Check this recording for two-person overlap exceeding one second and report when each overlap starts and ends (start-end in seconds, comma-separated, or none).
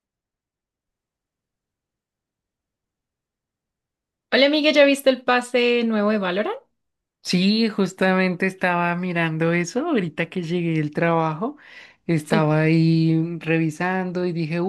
none